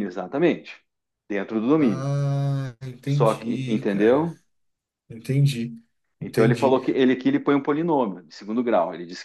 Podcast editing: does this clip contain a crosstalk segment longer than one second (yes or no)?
yes